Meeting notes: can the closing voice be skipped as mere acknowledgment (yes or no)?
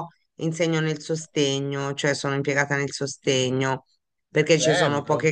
yes